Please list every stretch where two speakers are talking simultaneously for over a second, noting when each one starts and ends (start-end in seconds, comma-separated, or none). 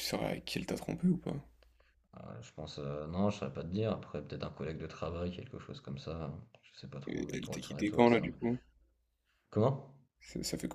7.1-8.4